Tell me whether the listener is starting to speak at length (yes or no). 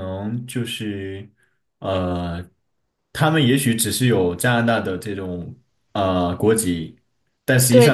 no